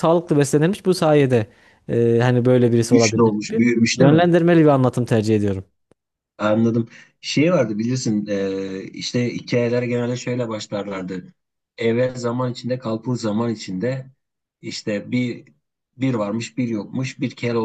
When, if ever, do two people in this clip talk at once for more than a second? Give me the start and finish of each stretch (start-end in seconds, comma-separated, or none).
2.8-4.3